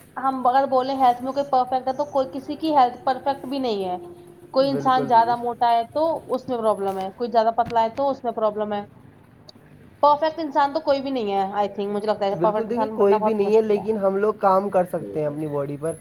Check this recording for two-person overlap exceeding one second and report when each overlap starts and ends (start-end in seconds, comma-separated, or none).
12.4-13.8